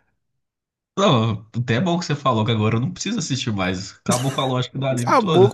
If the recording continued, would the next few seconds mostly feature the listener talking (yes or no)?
yes